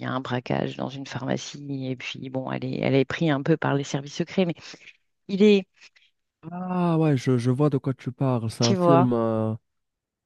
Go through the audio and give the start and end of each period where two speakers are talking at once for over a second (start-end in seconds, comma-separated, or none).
none